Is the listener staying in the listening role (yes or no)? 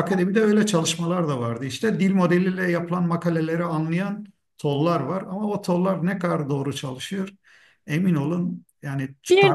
no